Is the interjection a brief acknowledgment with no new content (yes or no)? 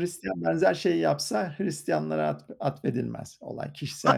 no